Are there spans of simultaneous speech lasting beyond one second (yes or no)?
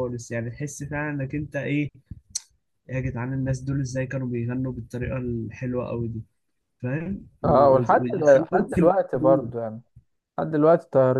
yes